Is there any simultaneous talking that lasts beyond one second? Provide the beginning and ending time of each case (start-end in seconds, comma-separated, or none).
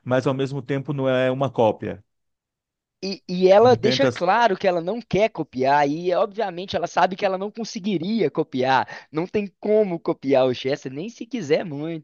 none